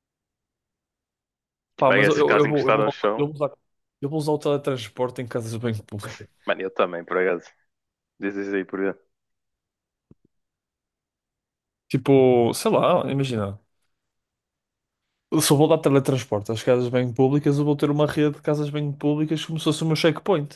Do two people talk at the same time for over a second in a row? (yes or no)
yes